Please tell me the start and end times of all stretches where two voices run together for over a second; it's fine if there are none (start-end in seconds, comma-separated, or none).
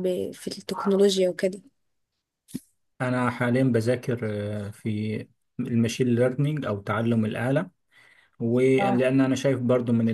none